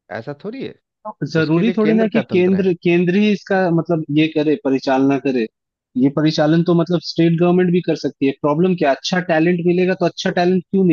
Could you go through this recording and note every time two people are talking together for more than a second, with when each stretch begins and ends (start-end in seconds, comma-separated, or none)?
1.4-2.7